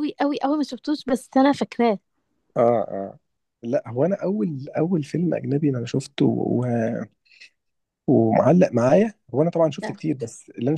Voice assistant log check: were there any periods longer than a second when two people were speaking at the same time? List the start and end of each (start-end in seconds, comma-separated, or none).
none